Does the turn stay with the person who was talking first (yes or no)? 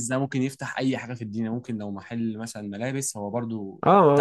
no